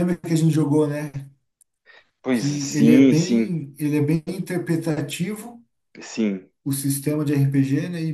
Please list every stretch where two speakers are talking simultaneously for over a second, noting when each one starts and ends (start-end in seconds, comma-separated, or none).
2.3-3.6